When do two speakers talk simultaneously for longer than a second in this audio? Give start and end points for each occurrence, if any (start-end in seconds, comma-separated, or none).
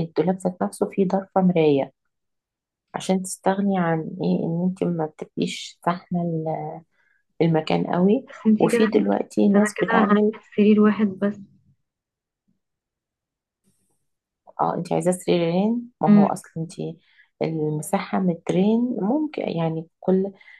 8.3-10.3